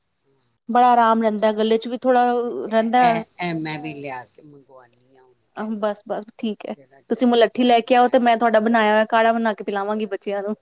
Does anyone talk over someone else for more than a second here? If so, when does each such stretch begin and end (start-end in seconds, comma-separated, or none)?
5.8-8.4